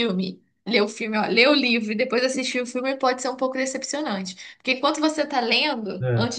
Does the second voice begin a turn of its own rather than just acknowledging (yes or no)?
no